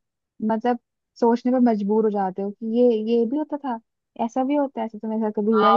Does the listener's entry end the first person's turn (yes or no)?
yes